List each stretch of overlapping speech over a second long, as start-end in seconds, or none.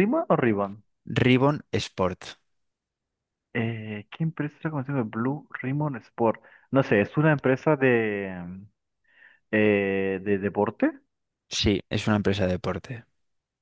none